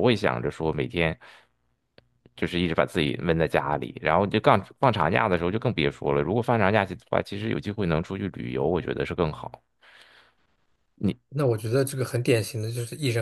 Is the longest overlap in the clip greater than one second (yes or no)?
no